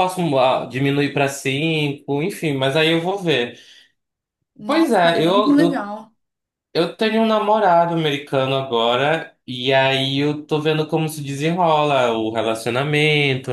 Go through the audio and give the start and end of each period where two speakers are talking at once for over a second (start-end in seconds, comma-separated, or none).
4.7-5.9